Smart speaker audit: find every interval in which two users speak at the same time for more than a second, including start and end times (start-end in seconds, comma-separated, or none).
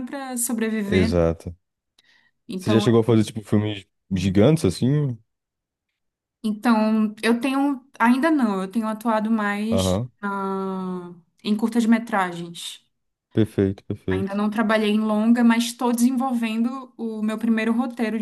none